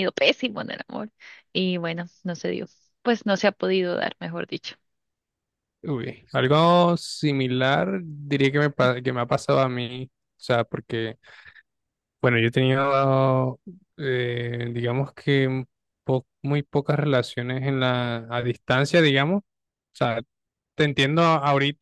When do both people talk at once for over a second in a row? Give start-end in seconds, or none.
none